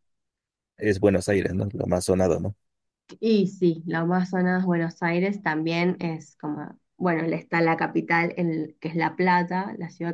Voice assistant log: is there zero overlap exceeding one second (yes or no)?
yes